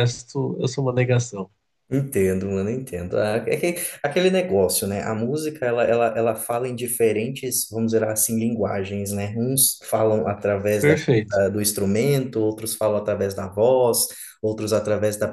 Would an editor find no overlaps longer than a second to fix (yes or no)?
yes